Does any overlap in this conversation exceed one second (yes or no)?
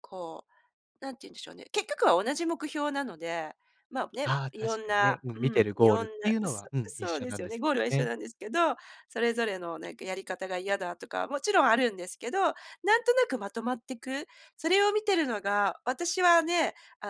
yes